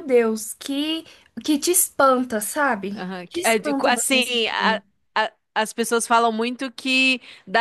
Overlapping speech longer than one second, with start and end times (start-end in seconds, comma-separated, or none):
2.9-4.8